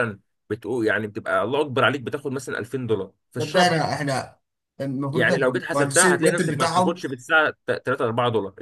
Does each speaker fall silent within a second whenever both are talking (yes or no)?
no